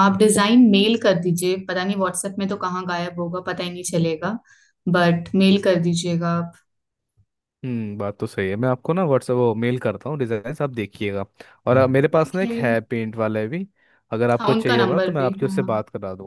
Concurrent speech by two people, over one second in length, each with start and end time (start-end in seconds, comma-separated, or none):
14.4-15.7